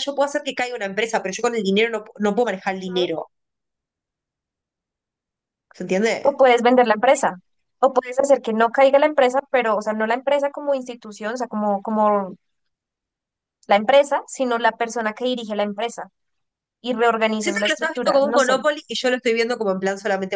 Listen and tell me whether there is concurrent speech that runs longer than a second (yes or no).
yes